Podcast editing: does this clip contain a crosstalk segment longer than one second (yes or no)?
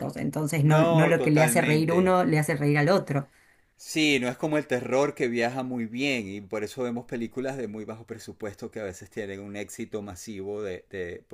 yes